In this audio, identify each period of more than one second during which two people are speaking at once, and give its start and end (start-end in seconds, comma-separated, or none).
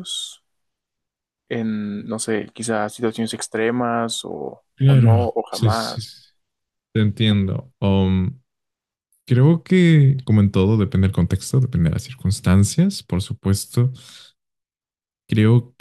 4.8-6.1